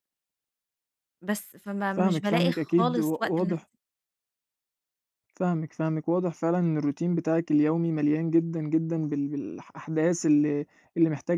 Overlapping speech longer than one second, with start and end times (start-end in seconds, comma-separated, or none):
1.9-3.6